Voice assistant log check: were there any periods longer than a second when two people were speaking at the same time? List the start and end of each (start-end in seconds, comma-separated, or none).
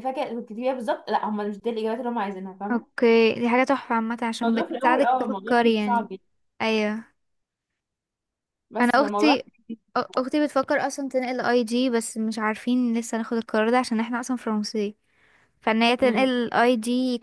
4.4-6.1